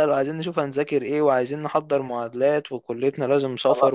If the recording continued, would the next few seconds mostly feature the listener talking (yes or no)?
no